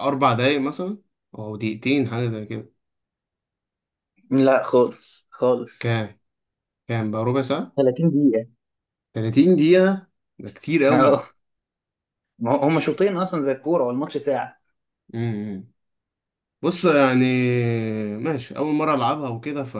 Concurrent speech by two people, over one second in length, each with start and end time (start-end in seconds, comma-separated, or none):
none